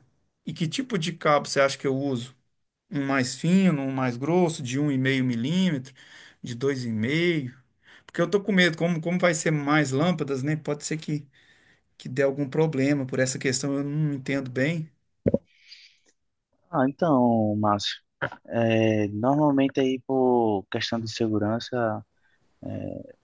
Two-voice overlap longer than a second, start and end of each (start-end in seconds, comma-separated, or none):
none